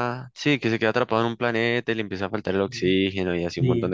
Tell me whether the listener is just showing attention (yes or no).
no